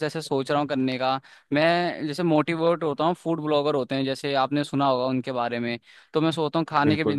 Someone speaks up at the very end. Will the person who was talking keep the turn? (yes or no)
yes